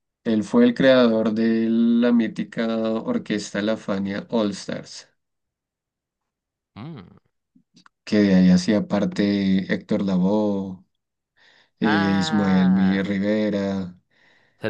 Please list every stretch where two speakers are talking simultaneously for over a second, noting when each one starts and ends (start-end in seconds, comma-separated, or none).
11.8-13.2